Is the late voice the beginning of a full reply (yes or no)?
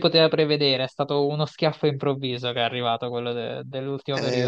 yes